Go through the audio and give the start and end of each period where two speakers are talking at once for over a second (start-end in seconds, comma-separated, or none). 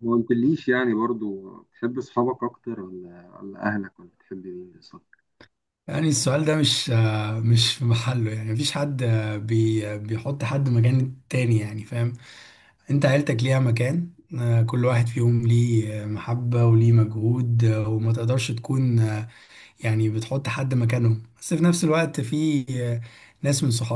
none